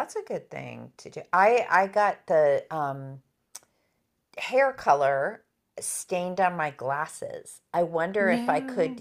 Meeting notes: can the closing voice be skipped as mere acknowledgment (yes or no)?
yes